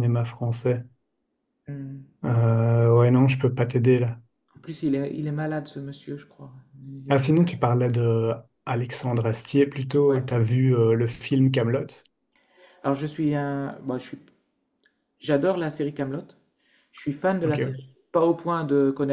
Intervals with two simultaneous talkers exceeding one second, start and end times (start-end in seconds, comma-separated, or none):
none